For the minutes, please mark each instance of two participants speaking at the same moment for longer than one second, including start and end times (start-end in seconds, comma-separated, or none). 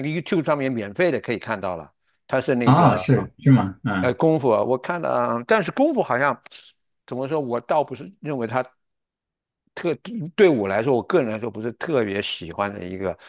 none